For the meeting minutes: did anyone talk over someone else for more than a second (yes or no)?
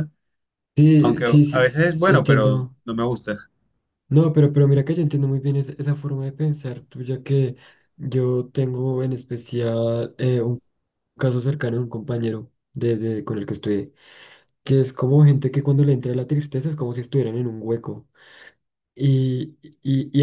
yes